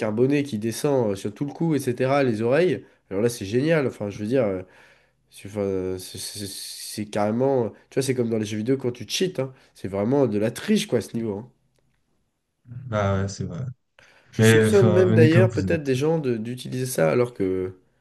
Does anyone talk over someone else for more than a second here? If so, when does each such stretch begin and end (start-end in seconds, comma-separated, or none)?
14.4-16.0